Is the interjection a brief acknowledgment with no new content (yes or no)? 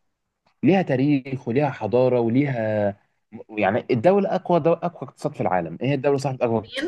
yes